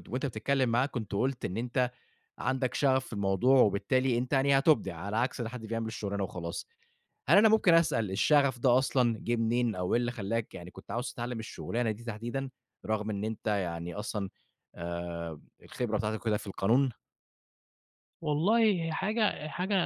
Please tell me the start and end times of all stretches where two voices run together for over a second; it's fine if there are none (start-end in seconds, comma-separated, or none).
none